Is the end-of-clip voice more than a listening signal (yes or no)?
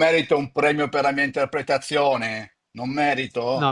yes